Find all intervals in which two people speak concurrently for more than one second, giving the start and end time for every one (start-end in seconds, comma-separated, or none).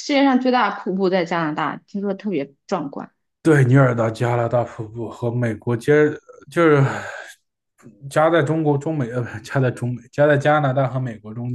none